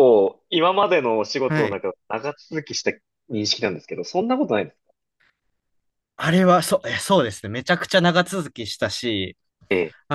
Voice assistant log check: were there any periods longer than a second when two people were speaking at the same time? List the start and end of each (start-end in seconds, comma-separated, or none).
none